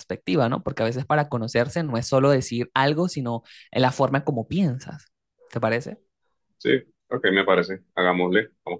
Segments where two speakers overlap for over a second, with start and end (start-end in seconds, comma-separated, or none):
none